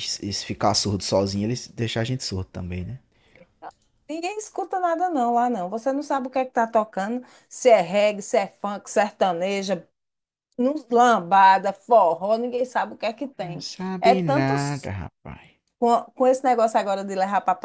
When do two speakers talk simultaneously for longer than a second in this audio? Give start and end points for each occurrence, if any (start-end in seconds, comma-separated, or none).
13.4-14.9